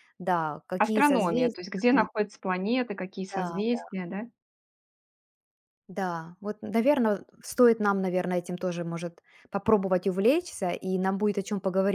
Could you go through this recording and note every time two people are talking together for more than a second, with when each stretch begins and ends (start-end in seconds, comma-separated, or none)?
0.8-2.1